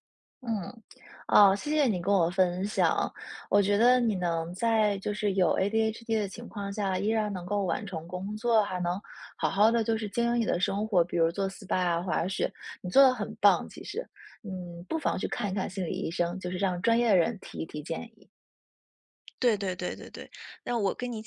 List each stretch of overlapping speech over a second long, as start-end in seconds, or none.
none